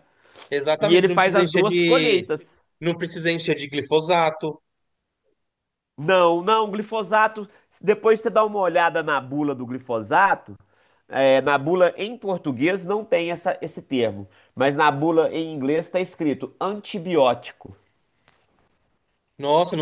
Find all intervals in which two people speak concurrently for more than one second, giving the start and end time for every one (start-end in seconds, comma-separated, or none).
0.8-2.2